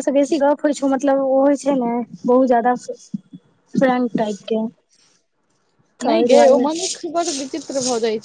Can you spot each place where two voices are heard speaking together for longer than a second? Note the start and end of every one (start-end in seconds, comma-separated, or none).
none